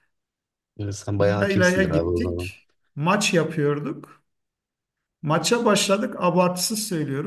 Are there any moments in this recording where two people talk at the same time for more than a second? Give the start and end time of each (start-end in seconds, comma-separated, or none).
1.2-2.5